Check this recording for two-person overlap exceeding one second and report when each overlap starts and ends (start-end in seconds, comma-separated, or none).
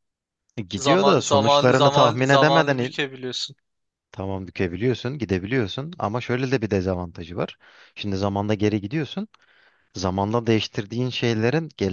0.8-3.0